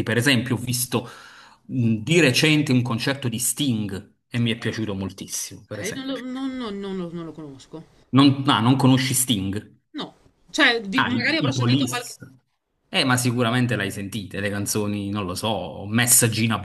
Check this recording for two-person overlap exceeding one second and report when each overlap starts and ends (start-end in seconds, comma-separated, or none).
10.9-12.2